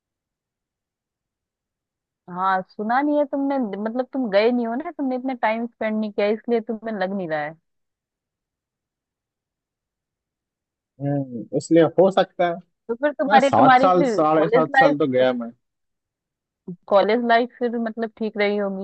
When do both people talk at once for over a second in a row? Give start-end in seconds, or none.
13.3-14.9